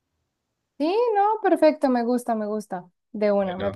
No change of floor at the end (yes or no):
yes